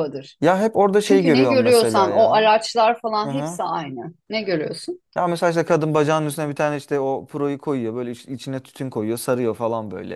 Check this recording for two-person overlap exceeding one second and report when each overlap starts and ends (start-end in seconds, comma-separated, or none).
1.0-2.5